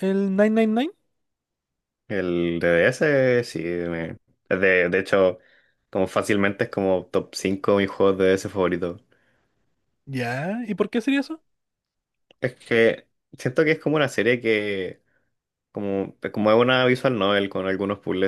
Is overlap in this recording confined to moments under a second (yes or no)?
yes